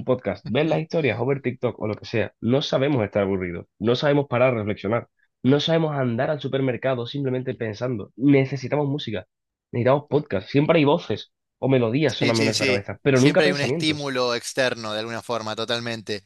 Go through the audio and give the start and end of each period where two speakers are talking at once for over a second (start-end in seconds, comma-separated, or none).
12.2-14.1